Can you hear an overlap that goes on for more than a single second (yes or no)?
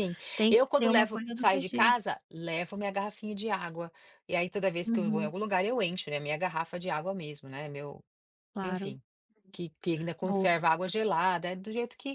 yes